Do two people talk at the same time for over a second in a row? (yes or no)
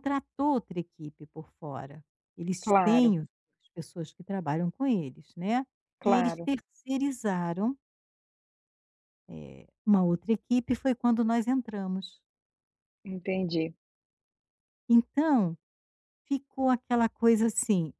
no